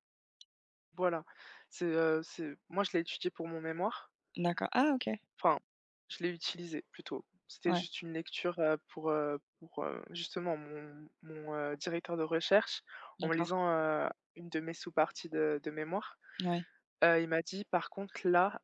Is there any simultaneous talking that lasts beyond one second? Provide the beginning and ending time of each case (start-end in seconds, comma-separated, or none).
none